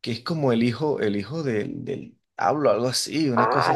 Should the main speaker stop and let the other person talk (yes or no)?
yes